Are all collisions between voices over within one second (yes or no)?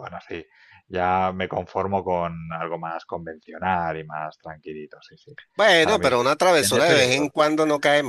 no